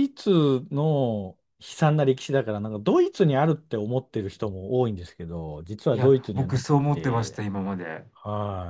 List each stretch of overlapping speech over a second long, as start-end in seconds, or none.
5.9-7.4